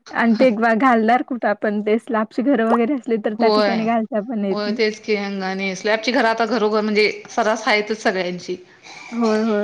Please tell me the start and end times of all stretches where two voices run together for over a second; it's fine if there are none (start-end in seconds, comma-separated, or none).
none